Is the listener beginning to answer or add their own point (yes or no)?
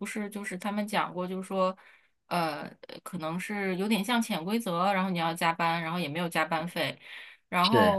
no